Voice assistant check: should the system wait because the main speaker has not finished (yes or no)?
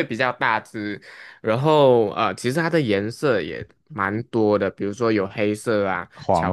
yes